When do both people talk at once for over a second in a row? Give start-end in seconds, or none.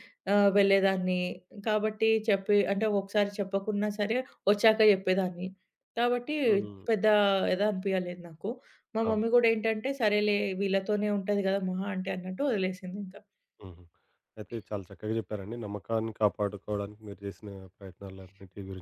none